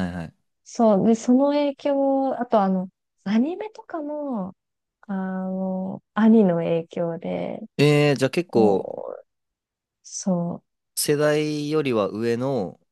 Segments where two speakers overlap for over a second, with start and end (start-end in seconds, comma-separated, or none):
none